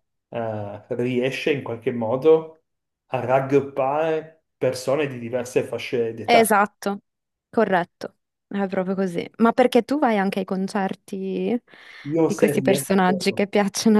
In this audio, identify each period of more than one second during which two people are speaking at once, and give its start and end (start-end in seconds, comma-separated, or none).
12.2-13.5